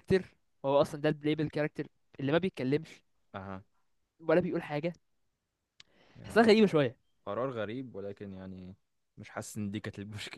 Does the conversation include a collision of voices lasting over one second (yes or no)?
no